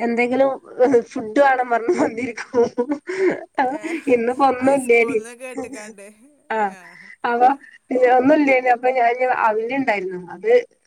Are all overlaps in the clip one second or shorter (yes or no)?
yes